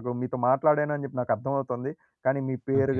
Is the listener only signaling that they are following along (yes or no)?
yes